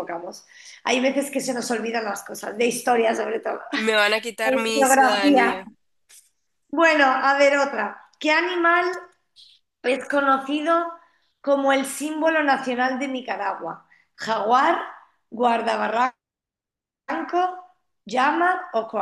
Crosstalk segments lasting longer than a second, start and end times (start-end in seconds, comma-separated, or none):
4.4-5.6